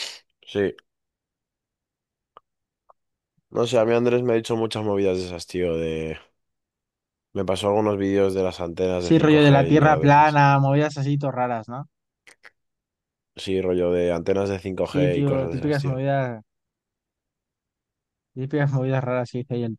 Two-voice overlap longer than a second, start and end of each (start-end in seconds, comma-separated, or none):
9.0-10.4, 14.8-16.0